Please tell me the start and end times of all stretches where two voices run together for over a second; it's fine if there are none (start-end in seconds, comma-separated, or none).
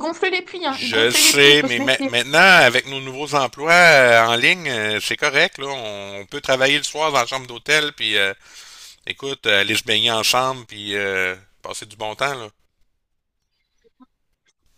0.7-2.1